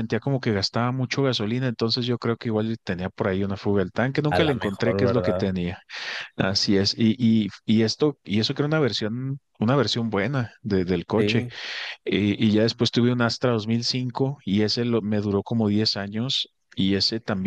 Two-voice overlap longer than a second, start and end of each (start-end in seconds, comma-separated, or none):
4.3-5.5